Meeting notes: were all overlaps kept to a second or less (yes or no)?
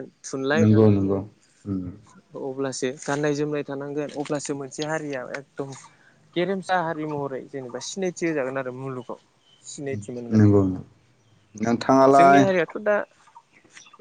yes